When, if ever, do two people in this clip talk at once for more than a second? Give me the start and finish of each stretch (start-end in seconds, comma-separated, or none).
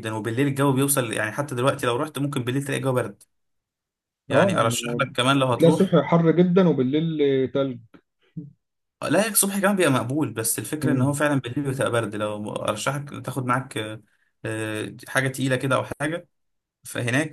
none